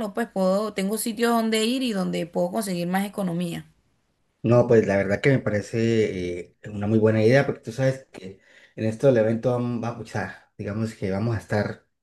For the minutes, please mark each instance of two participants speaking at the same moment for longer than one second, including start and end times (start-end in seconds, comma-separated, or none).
none